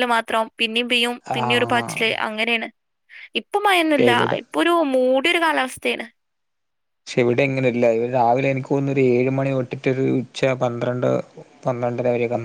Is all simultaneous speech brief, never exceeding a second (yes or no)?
yes